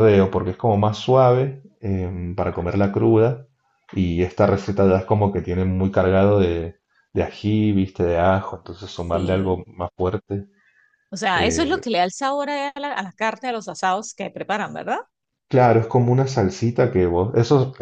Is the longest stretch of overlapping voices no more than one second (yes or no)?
yes